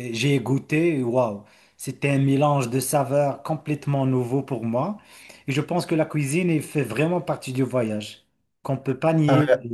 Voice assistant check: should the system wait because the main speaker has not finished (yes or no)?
yes